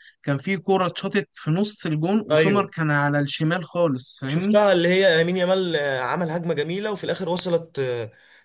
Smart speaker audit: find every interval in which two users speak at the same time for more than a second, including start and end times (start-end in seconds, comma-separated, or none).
none